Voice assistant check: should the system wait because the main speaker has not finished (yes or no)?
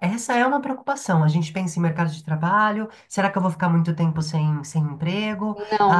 no